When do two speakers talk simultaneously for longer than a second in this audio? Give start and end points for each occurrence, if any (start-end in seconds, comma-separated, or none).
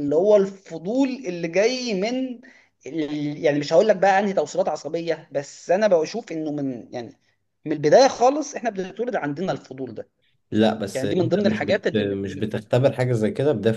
10.9-12.6